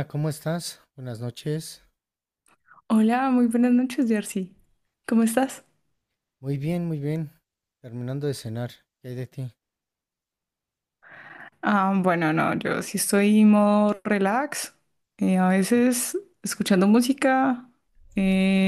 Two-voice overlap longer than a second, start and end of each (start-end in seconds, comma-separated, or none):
none